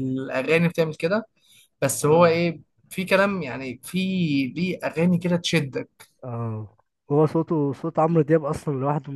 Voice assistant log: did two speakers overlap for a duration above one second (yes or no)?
no